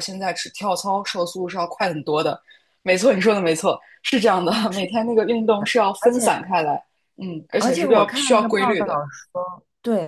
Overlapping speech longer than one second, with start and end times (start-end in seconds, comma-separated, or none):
7.6-9.0